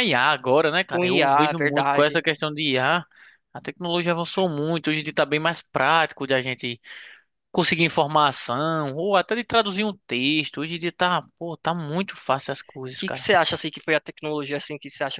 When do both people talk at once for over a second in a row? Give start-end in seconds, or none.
0.9-2.2